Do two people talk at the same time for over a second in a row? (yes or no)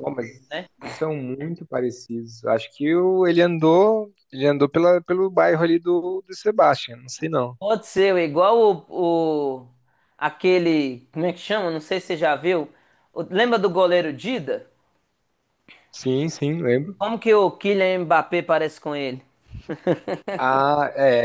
no